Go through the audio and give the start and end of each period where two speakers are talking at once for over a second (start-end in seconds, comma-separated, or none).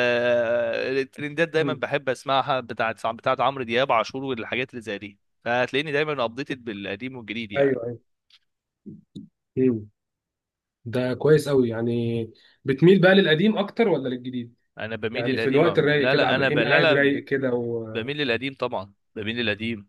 15.1-17.1